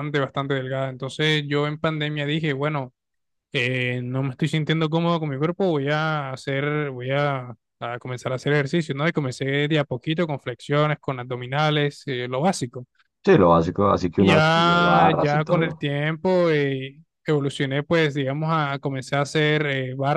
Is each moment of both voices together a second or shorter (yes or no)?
no